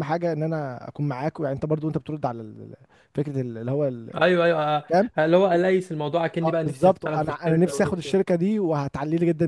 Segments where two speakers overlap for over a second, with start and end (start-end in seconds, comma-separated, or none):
6.4-8.4